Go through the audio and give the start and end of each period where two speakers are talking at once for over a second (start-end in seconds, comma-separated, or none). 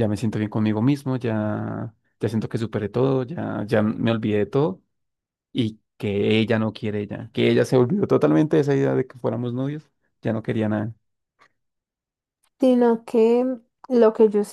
none